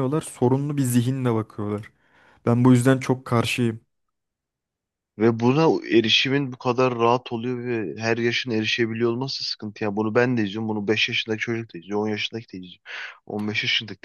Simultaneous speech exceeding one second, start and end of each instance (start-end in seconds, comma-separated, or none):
none